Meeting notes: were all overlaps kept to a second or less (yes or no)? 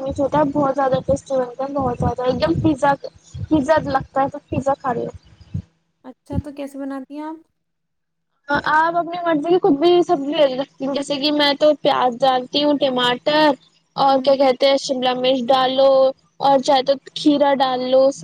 yes